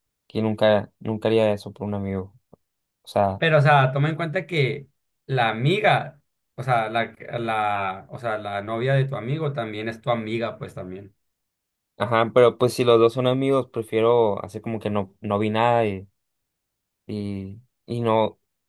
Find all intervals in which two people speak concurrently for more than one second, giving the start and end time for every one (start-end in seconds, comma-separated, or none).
none